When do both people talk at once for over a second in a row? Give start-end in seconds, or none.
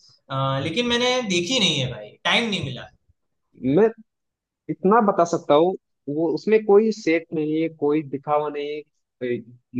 none